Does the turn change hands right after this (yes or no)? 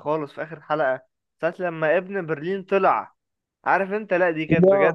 no